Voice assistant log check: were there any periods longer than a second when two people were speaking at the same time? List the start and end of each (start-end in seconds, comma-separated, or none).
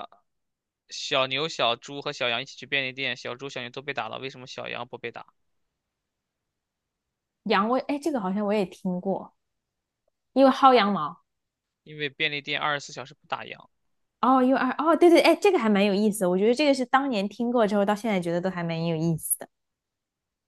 none